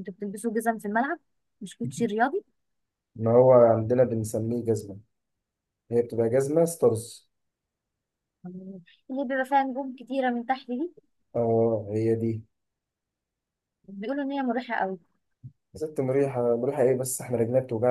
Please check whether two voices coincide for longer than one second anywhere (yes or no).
no